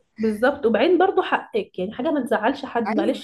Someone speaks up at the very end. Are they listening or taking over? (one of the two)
listening